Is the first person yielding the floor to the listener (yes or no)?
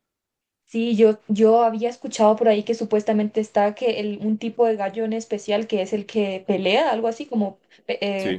yes